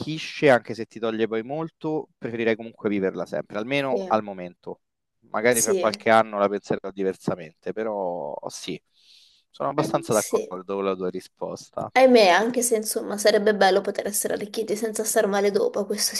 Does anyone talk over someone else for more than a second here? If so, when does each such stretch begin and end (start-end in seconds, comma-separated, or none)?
none